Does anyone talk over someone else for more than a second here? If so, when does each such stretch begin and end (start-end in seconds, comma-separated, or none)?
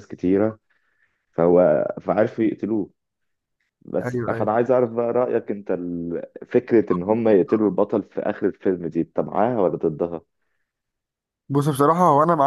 none